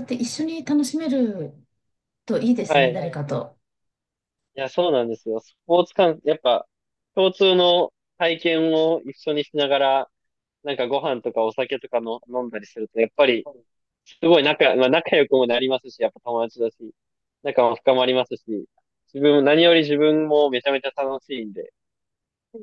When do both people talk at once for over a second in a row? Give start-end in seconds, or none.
none